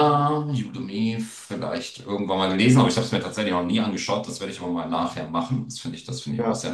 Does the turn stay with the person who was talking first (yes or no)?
yes